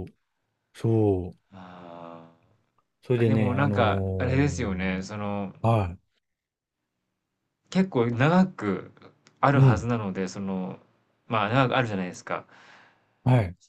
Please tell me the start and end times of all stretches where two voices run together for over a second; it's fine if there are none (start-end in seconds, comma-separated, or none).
3.2-4.7